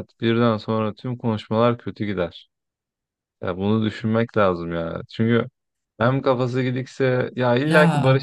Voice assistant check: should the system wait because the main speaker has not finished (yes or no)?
yes